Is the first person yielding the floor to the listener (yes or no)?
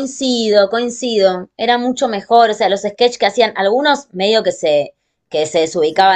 no